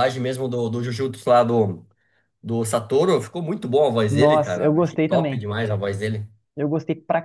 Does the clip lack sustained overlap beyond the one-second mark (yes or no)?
no